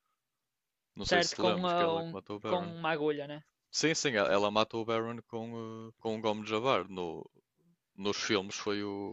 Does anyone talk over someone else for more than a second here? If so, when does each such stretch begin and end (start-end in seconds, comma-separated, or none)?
1.0-2.8